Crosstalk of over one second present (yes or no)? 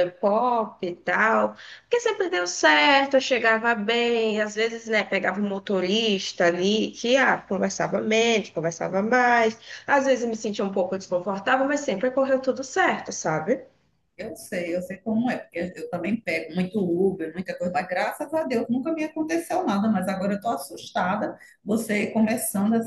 no